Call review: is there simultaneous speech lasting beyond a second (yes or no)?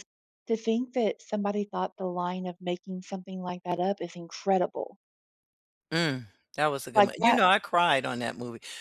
no